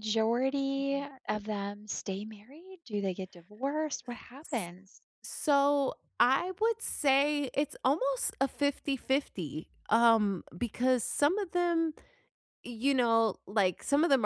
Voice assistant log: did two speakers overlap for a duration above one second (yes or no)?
no